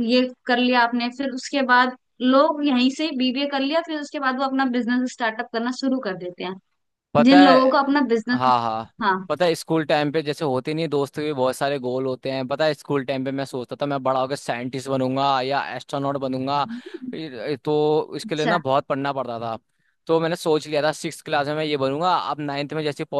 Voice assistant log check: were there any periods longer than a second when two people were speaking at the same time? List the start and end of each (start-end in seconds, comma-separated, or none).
none